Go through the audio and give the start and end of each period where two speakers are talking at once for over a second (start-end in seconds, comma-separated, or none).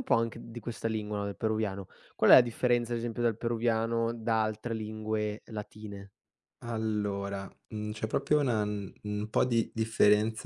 none